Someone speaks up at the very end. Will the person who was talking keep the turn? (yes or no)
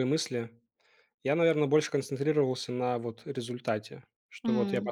yes